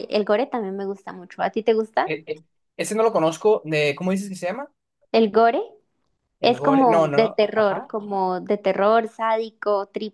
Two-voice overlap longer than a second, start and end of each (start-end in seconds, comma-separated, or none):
6.4-7.9